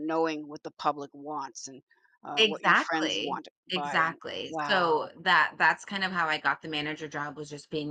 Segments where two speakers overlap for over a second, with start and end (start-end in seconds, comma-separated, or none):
2.4-5.1